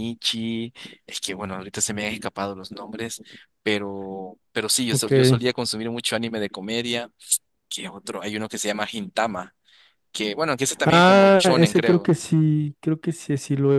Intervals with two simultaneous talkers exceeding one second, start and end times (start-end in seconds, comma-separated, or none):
10.8-12.1